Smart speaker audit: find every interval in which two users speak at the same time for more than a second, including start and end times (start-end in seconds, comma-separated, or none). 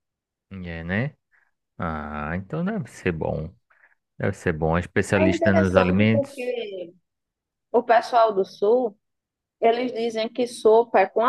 5.1-6.5